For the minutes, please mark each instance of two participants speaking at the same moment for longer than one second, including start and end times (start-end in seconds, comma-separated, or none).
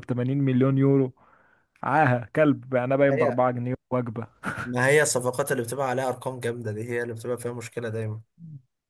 none